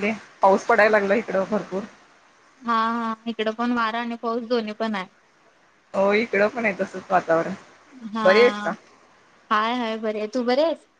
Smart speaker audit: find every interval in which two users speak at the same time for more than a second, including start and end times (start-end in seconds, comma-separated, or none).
none